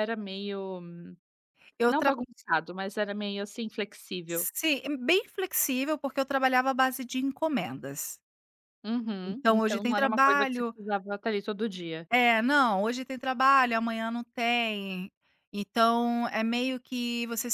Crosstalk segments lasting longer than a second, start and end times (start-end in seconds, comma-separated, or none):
9.2-10.7